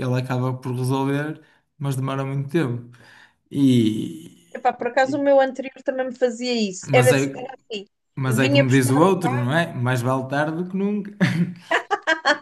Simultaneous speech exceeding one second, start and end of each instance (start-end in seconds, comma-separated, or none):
8.3-9.5